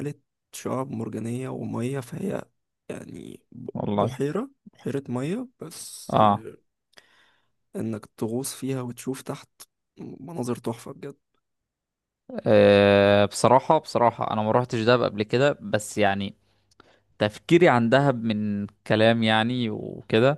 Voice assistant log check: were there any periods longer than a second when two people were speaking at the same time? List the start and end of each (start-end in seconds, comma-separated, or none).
none